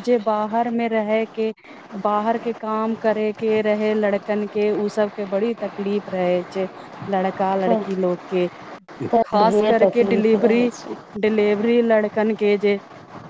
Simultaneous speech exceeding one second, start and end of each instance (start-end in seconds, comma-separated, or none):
9.2-10.7